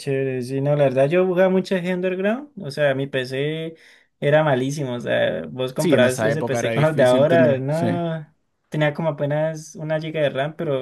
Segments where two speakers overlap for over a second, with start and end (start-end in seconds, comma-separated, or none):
5.8-8.0